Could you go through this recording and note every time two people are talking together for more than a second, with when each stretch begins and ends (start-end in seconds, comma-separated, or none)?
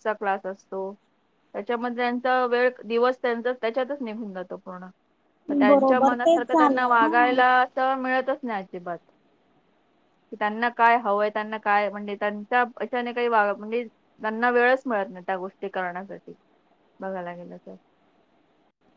5.7-7.4